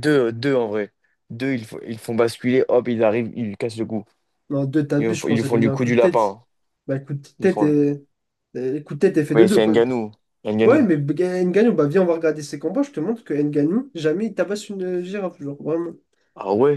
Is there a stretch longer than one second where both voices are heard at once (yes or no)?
yes